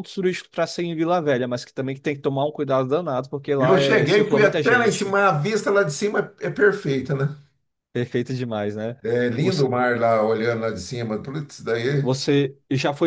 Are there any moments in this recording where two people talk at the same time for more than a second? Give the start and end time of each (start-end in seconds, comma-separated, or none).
3.6-5.2